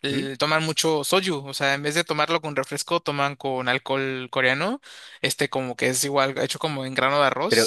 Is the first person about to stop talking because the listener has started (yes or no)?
yes